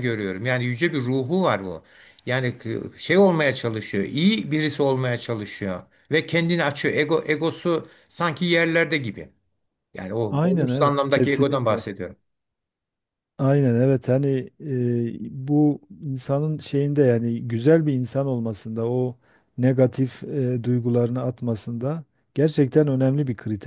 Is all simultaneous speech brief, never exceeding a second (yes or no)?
no